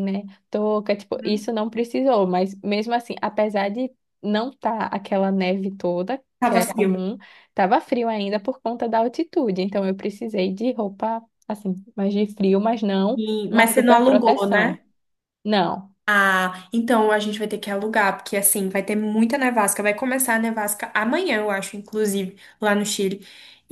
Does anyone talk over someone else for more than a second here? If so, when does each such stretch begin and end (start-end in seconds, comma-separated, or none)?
13.2-14.8